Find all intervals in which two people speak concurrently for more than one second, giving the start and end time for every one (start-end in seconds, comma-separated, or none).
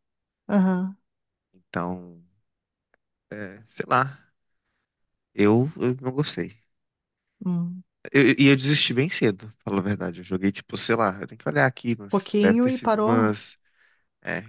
12.1-13.3